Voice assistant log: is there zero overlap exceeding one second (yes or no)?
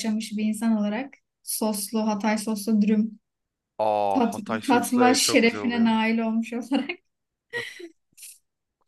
no